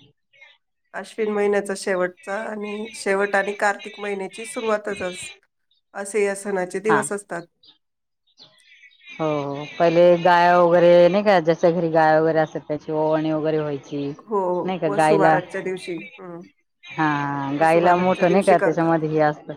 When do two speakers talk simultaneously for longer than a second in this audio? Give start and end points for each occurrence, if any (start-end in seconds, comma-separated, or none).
17.6-18.9